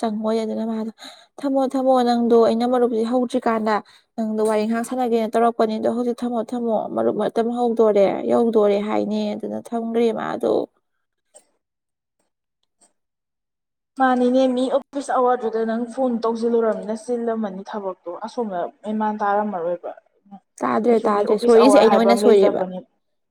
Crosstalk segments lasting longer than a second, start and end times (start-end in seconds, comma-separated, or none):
20.9-22.6